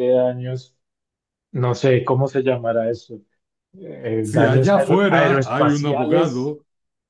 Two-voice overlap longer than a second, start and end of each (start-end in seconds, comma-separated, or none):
4.2-6.5